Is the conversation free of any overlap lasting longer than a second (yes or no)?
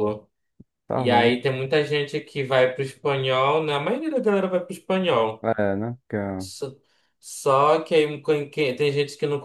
yes